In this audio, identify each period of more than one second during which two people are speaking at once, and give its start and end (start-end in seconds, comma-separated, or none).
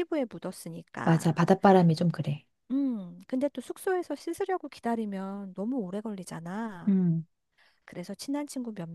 none